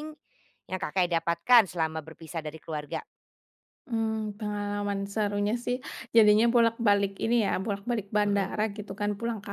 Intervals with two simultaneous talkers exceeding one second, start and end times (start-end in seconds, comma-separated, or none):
none